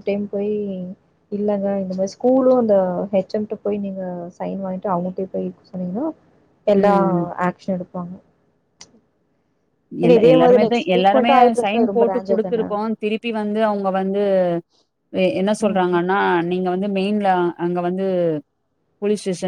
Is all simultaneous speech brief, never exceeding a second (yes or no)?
no